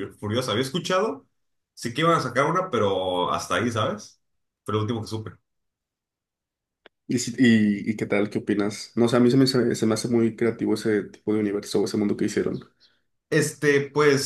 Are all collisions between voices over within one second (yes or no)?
yes